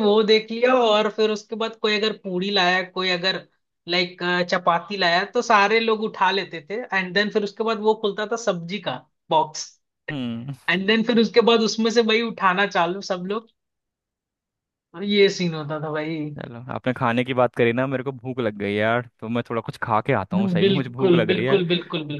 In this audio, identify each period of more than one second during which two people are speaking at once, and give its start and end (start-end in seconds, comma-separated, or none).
20.3-21.6